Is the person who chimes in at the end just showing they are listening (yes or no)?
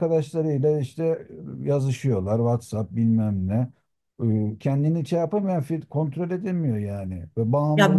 no